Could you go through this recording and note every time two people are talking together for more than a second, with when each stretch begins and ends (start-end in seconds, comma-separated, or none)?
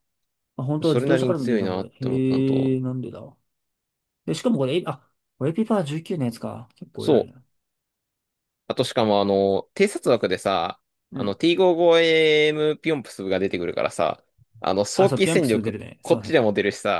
0.8-2.8, 14.9-16.4